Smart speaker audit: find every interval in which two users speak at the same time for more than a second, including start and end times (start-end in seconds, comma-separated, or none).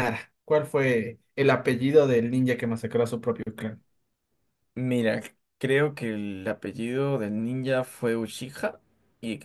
none